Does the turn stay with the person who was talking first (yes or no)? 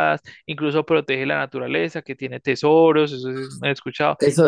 no